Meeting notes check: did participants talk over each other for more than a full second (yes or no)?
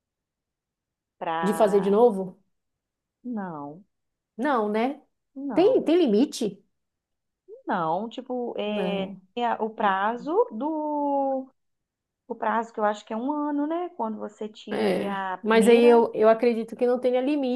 yes